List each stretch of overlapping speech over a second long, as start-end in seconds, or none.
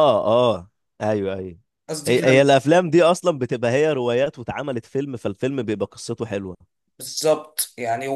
none